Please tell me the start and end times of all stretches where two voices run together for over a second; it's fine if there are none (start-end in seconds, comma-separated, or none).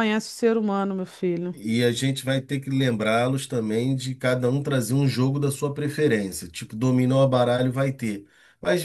none